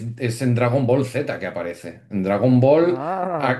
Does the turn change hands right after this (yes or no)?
no